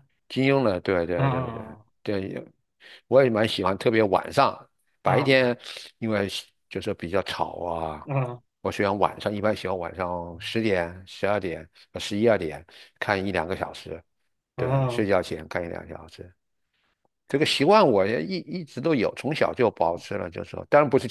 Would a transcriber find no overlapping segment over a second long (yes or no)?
yes